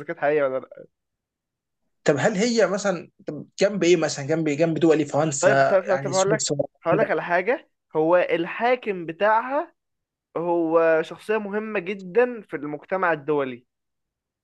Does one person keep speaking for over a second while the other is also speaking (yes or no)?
yes